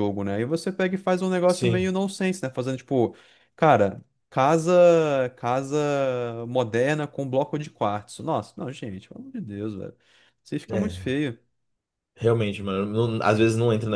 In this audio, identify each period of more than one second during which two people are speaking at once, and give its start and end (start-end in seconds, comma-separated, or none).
none